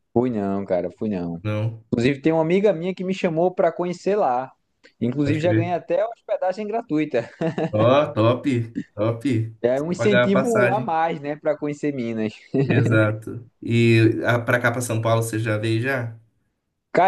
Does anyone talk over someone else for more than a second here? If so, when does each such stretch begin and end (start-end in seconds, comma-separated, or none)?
9.6-10.9